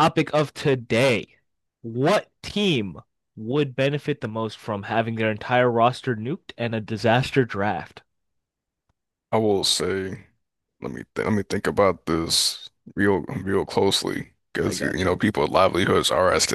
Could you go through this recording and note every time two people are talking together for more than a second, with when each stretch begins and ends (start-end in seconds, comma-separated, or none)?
none